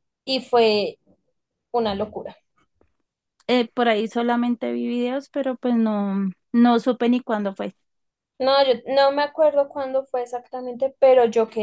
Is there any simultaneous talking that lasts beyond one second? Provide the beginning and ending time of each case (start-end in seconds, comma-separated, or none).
none